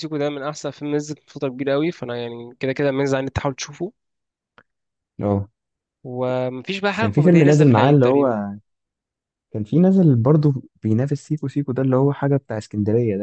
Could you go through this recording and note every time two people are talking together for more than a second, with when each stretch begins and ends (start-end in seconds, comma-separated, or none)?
7.0-8.3